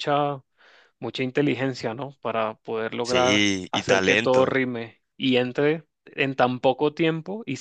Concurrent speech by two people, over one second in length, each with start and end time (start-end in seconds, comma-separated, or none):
3.0-4.6